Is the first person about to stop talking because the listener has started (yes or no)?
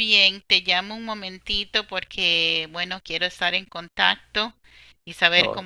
no